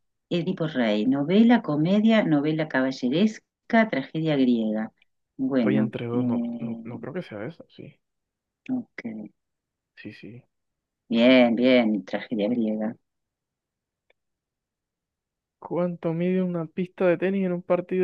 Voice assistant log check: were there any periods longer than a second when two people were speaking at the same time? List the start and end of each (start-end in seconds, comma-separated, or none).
5.5-7.0